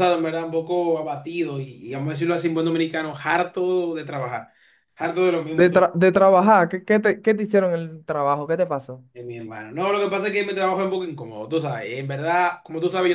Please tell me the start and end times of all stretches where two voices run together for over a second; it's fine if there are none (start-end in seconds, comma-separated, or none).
none